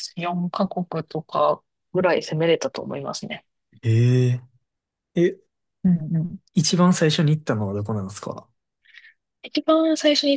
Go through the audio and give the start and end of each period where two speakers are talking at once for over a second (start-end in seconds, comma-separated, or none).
none